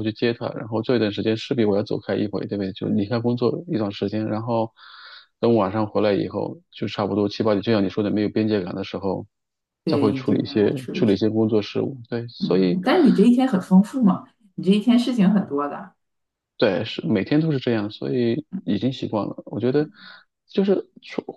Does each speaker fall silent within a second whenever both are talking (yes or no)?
no